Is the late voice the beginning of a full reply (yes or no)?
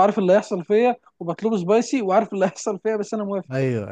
yes